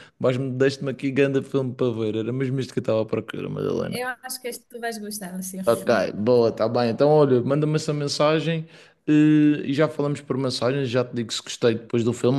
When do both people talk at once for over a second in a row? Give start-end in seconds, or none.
none